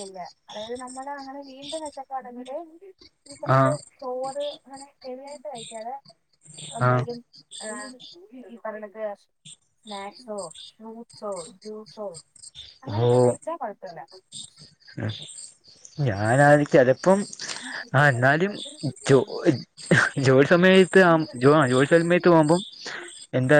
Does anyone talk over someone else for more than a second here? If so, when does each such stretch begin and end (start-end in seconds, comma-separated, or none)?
21.1-22.6